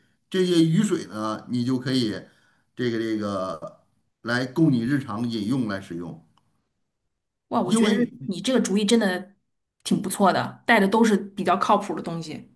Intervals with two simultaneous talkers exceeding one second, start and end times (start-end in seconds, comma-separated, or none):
none